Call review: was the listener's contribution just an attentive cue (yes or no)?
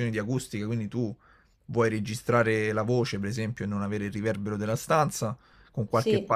yes